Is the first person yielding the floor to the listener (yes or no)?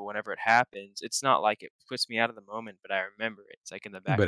yes